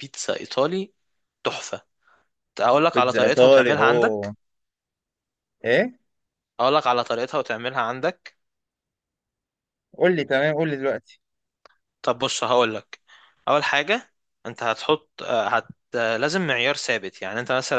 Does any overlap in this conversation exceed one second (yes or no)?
yes